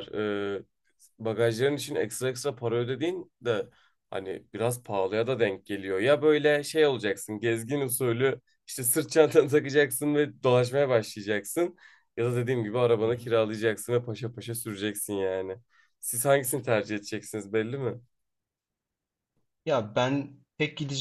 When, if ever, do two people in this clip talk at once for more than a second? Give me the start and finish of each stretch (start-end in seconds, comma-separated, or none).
none